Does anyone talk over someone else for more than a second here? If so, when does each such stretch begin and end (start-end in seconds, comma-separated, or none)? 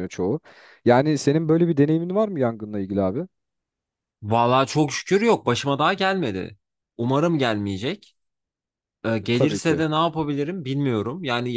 none